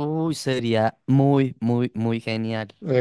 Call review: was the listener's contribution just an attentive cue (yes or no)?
no